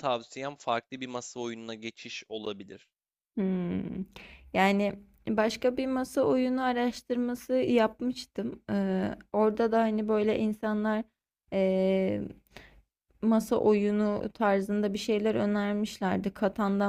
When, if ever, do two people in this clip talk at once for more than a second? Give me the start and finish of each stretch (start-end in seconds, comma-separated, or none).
none